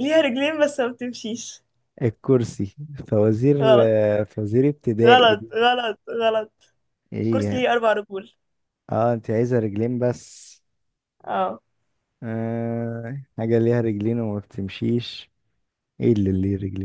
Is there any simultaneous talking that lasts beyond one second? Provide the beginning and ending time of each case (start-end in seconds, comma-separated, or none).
none